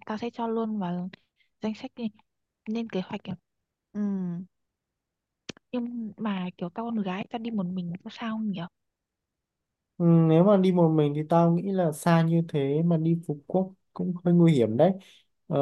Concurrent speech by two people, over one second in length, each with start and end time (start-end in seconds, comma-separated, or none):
none